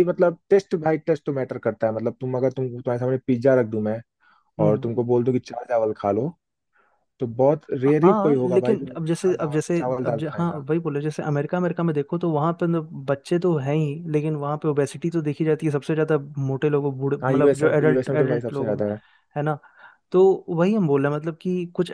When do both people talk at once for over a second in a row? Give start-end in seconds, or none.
8.0-10.6, 17.2-18.8